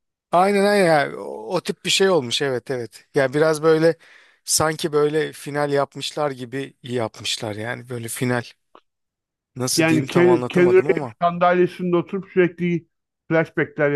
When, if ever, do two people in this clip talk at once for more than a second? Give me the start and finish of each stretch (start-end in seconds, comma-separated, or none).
9.8-11.1